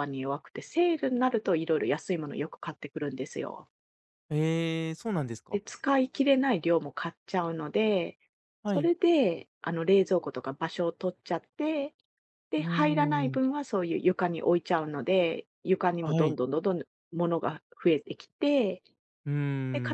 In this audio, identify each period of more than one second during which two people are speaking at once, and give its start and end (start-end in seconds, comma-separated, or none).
none